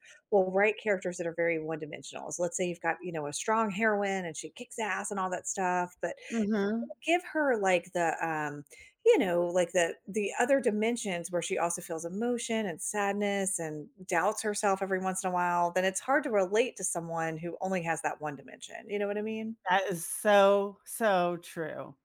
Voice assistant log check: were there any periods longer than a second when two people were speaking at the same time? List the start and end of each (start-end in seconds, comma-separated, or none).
none